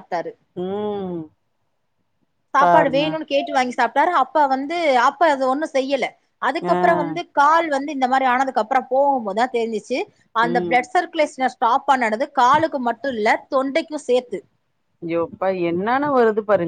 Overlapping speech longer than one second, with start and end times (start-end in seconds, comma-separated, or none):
none